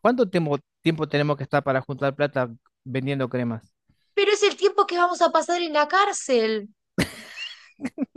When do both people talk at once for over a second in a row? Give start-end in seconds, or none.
none